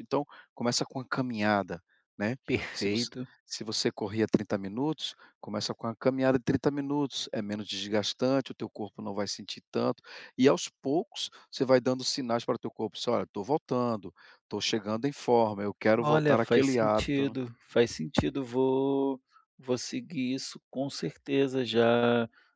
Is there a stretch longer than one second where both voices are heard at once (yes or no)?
yes